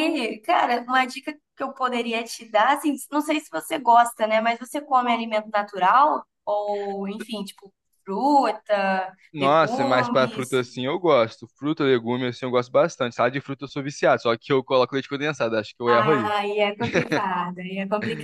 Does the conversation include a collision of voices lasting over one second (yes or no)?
yes